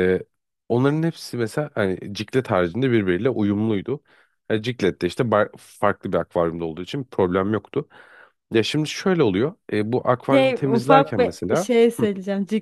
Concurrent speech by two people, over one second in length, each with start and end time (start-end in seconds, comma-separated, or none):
10.3-12.1